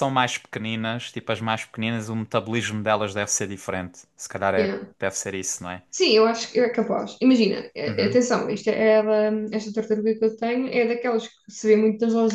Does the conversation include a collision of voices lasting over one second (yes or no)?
no